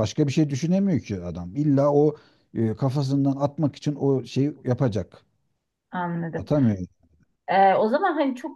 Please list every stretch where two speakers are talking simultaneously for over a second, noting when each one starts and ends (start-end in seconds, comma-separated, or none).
none